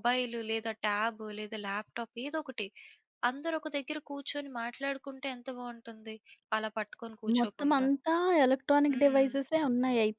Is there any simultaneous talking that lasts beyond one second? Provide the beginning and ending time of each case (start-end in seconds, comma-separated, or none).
none